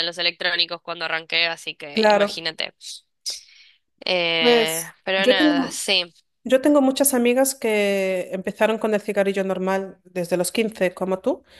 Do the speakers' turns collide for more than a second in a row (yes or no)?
yes